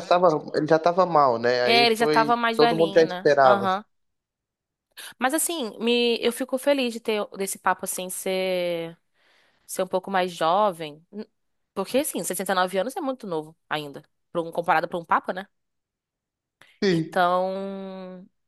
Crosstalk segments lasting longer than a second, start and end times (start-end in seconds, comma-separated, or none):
1.6-3.7